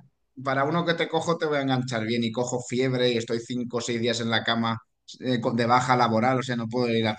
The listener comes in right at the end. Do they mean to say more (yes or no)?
no